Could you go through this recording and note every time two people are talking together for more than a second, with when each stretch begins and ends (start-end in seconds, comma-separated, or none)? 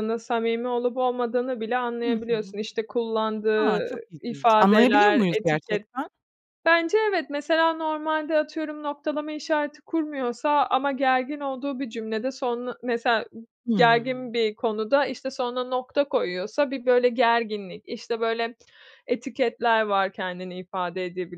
3.6-5.9